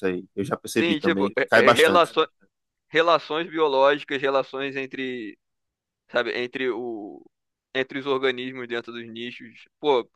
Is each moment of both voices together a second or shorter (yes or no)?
no